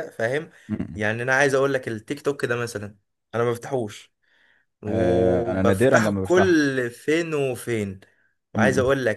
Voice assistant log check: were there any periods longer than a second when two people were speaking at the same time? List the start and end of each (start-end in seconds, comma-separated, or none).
4.9-6.6